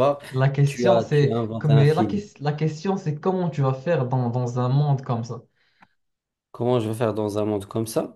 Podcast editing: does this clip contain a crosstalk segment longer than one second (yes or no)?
yes